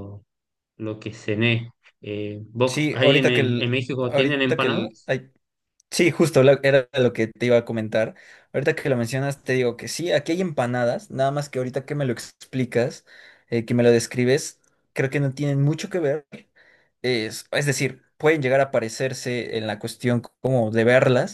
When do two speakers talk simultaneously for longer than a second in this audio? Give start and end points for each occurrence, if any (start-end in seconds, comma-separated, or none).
2.7-5.1